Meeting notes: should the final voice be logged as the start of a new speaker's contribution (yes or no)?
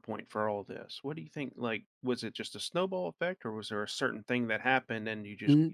yes